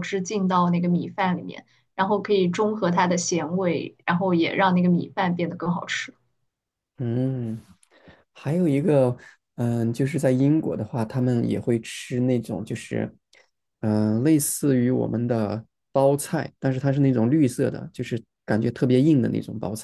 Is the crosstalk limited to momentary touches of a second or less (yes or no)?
yes